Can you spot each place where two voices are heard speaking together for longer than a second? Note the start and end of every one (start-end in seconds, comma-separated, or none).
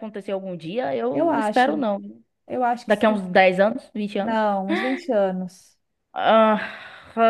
none